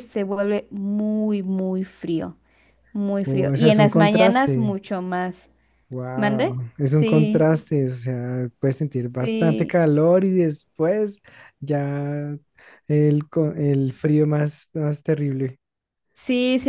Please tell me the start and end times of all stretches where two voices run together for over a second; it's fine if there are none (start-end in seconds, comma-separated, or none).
3.2-4.8, 6.1-7.5